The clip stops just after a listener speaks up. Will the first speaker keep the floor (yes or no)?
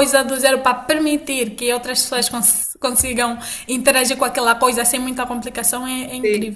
no